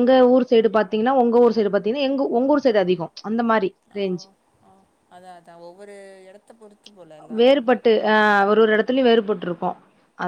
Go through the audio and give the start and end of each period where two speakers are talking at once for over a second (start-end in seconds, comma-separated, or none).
none